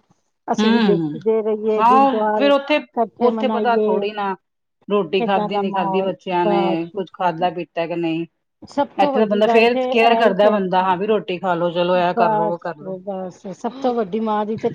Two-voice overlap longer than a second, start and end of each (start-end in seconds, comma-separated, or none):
5.2-7.0, 9.0-10.9